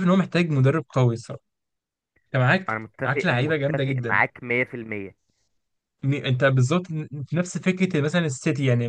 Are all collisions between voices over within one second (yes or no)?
no